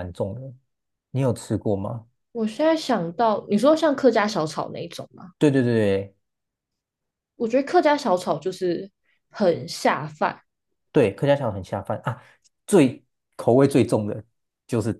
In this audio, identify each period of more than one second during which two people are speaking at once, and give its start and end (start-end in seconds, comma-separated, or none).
none